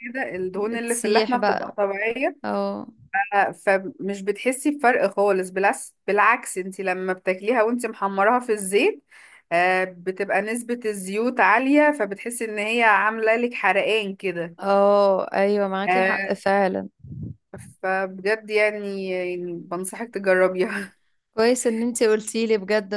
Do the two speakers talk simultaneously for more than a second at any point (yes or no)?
yes